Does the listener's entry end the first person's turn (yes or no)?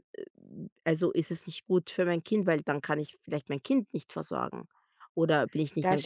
no